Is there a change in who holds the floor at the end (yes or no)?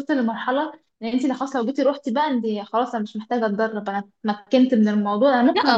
yes